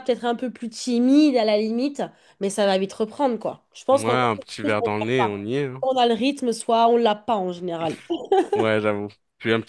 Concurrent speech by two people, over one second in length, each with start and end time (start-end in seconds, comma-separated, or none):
3.9-5.8